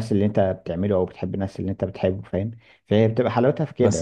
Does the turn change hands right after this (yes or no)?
yes